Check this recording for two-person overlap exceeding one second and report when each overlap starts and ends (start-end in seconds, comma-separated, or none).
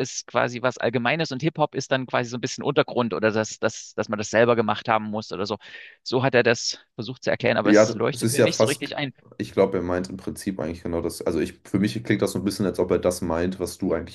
7.6-8.9